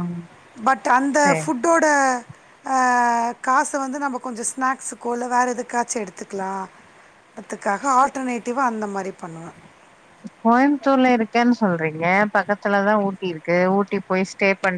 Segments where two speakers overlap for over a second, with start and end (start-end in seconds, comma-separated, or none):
none